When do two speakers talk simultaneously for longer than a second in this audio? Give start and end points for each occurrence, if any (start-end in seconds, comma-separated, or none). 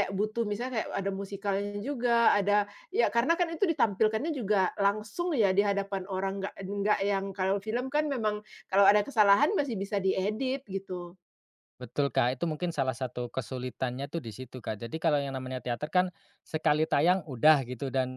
none